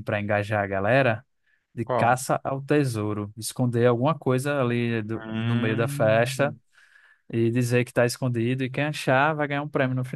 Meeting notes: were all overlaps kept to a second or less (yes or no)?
no